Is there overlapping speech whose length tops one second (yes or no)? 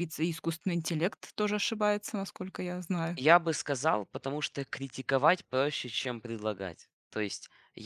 no